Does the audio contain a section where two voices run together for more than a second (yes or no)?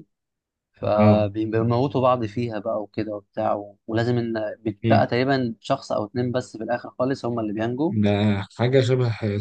no